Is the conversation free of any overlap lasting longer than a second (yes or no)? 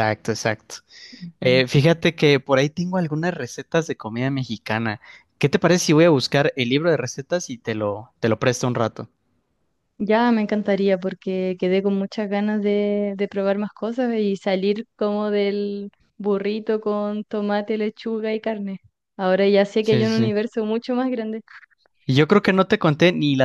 yes